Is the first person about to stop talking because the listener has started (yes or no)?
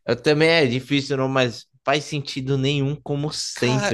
yes